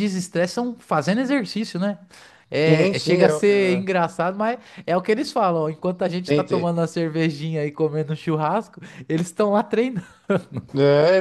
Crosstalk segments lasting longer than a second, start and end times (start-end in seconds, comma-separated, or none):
2.5-3.9